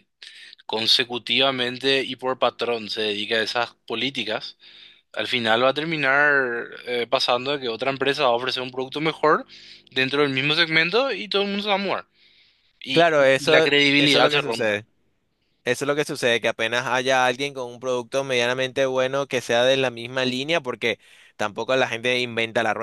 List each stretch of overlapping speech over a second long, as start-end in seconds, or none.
12.9-14.7